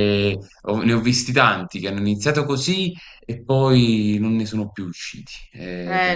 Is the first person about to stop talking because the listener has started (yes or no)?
yes